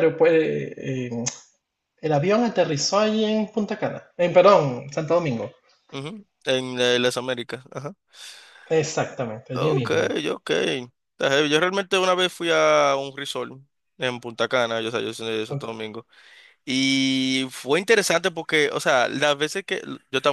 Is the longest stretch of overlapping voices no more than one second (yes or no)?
yes